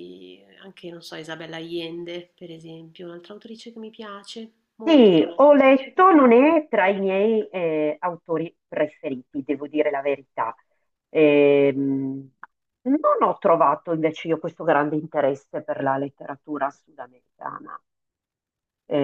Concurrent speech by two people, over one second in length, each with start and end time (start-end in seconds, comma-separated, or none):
none